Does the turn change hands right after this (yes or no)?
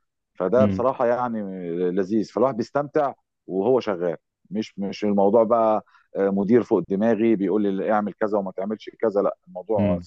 no